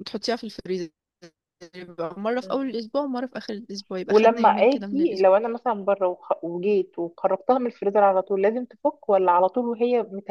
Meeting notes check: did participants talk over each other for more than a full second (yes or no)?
yes